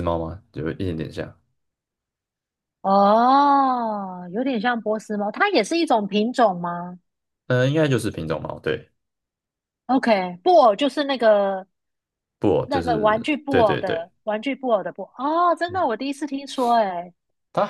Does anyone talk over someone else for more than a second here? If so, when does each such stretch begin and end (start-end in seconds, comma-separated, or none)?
12.6-14.1